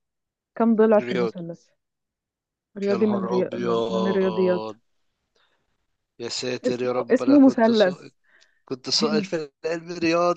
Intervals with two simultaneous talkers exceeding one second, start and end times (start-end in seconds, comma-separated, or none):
2.9-4.7, 6.7-8.1